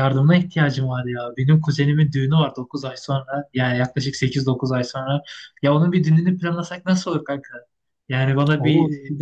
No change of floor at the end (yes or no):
yes